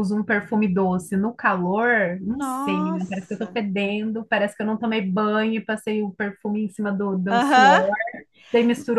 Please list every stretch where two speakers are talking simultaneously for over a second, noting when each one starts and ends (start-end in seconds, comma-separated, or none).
2.3-3.6